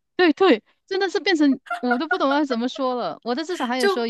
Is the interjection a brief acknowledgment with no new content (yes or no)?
yes